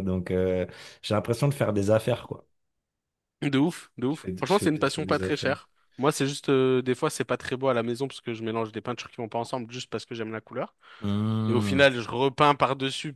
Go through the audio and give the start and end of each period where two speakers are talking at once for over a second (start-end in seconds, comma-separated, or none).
4.1-5.6